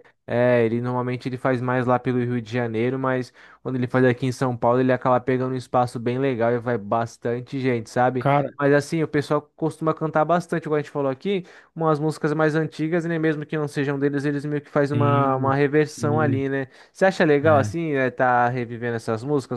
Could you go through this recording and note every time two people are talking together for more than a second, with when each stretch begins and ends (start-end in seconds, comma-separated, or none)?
14.9-16.4